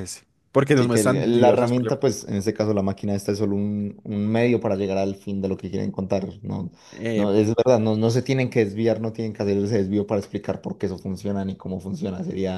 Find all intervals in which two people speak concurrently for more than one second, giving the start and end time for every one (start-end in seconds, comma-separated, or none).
0.7-2.0